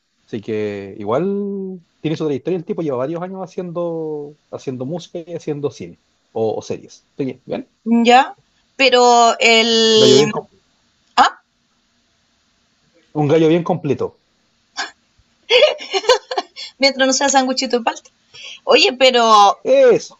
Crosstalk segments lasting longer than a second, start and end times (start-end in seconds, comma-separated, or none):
none